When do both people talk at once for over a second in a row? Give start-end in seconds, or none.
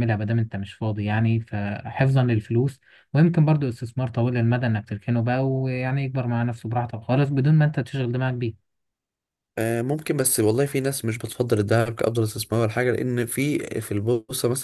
none